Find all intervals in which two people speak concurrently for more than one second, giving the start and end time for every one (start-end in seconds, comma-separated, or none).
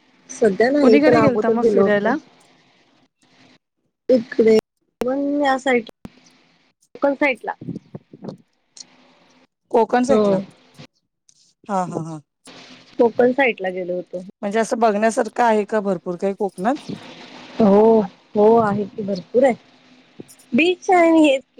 0.8-2.1